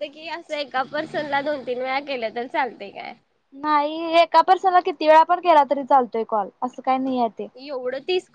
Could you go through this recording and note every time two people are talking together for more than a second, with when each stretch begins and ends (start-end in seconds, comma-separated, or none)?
none